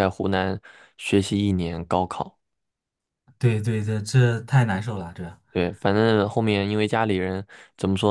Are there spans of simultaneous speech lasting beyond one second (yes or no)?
no